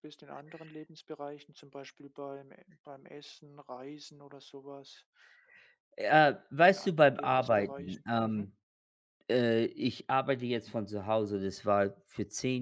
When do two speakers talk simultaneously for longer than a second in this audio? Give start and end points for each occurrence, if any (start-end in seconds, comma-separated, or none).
6.7-8.5